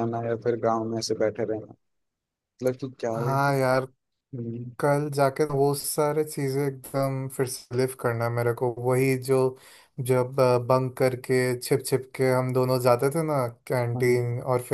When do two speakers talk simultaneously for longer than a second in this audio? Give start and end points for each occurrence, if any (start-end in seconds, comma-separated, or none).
none